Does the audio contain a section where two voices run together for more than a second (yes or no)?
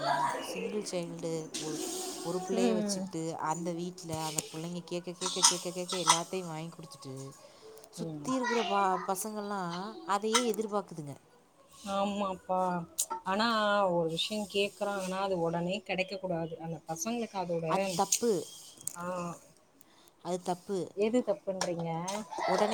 no